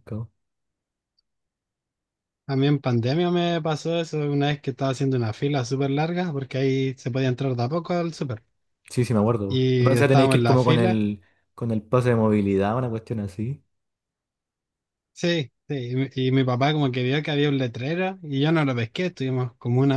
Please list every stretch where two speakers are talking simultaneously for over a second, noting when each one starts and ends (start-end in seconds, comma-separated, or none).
9.5-11.0